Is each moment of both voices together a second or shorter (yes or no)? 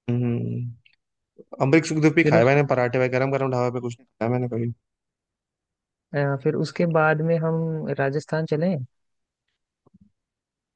yes